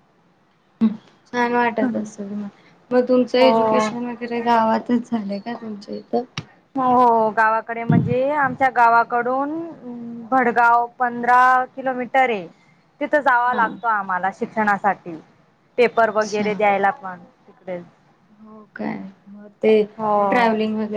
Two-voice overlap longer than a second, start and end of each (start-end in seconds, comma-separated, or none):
none